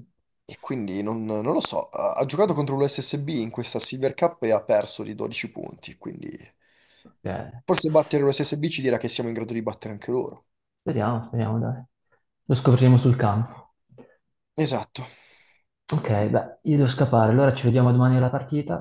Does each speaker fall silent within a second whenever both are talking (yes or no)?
yes